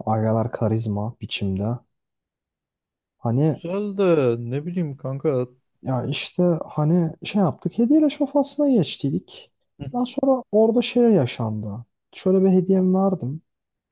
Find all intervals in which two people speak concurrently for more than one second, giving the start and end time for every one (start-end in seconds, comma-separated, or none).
none